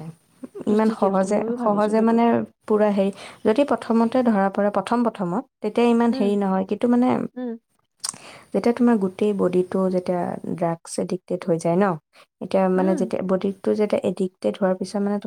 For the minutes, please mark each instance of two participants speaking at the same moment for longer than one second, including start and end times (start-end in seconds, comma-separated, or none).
0.7-2.2